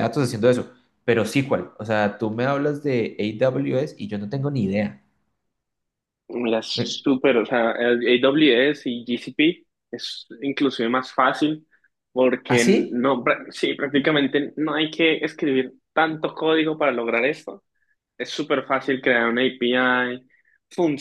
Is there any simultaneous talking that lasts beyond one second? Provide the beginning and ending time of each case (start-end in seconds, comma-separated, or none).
none